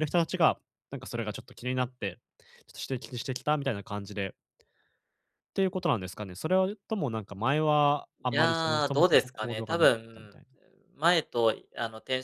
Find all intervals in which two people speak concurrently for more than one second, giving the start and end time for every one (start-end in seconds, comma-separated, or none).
8.2-10.4